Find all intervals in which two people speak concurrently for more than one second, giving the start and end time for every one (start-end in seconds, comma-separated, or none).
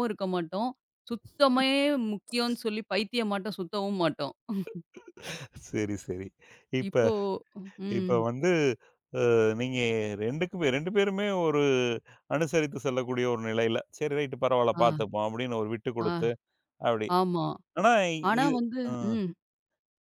none